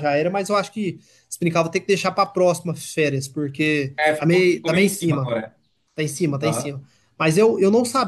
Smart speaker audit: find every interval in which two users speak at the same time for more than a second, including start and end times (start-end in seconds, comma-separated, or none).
4.0-5.3